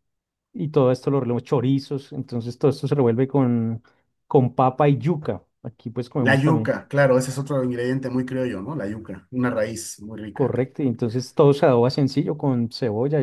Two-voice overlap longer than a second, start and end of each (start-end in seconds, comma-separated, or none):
none